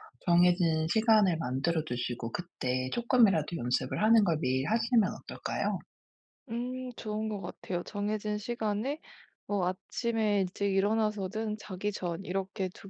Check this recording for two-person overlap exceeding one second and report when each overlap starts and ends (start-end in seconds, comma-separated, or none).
none